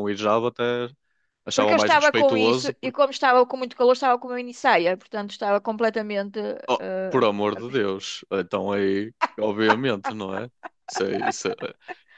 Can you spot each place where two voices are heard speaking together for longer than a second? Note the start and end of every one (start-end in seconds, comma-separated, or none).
1.5-3.0